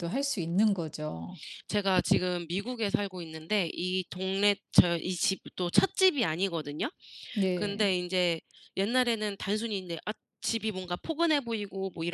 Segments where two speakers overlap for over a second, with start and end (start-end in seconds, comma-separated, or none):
none